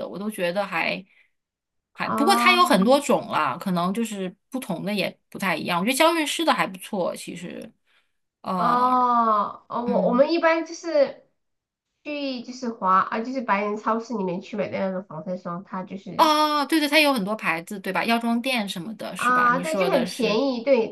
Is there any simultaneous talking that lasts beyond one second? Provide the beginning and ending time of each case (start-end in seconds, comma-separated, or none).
19.1-20.4